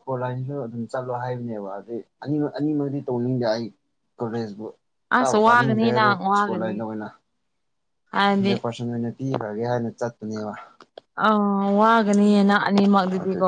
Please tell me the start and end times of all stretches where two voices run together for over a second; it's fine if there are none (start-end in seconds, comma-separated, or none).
5.2-6.7